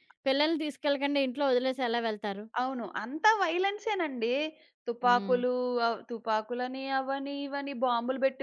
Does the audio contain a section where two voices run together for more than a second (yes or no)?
no